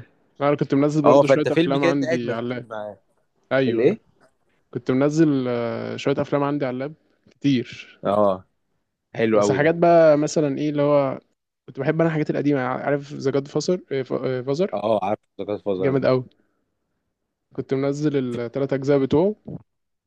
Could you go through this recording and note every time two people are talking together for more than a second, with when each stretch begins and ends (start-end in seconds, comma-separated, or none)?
1.0-2.7